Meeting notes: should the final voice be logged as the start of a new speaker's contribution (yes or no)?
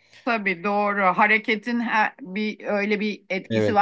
yes